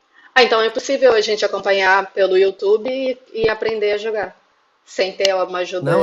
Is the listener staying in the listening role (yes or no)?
no